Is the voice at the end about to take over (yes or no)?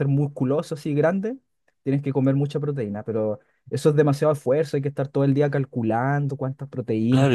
yes